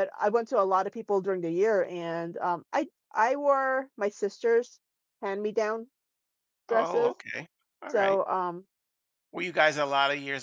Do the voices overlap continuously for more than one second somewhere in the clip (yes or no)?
no